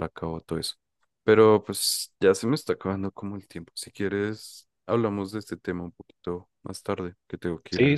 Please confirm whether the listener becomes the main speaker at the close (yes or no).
yes